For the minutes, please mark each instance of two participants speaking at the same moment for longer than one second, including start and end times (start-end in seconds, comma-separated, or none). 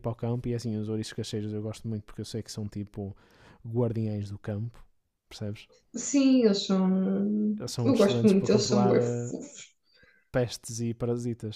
7.8-9.3